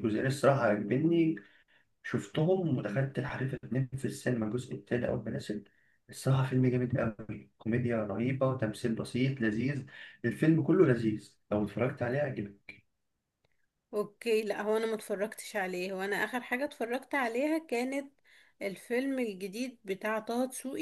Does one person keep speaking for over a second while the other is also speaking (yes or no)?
no